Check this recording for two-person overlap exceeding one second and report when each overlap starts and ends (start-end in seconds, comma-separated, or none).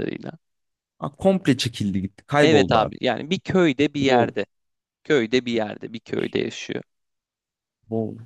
none